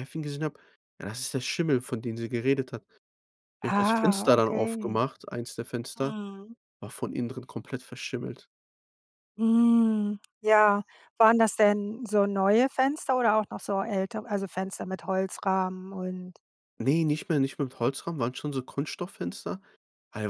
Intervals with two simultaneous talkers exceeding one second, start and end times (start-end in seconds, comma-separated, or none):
3.6-5.0